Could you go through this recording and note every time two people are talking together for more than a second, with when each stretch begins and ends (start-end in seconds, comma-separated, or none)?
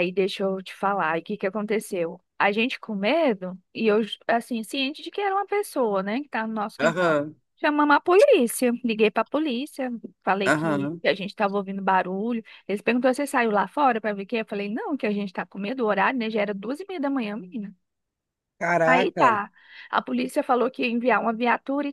none